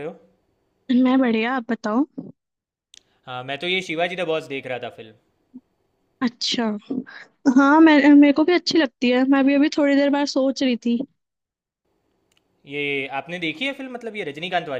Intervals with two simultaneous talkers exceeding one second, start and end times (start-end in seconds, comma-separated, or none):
none